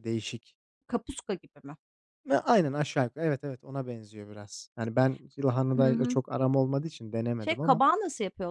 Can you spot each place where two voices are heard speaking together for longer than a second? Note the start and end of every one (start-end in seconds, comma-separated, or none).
none